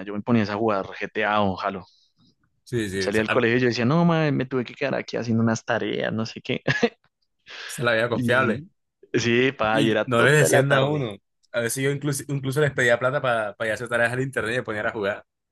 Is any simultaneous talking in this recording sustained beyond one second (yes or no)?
yes